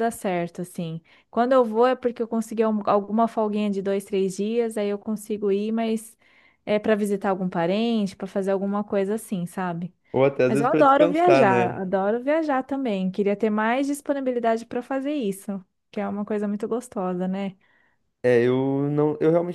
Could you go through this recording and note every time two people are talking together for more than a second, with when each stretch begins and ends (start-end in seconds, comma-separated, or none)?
10.5-11.8